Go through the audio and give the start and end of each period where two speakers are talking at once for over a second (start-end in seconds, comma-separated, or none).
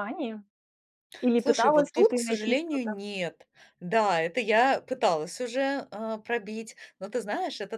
1.4-2.9